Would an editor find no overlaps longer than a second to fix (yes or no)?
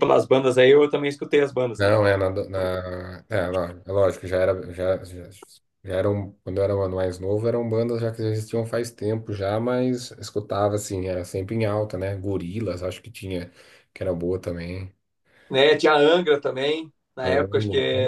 yes